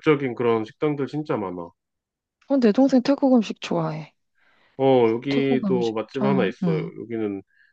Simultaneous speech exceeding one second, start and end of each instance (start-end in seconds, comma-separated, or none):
5.3-6.9